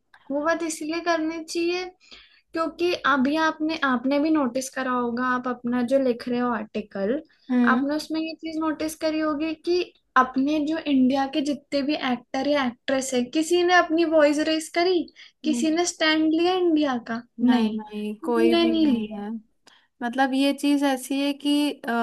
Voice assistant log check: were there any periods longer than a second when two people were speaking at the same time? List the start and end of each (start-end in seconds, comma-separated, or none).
17.4-19.2